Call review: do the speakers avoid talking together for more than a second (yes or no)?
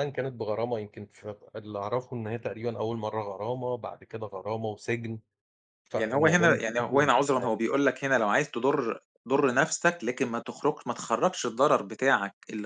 no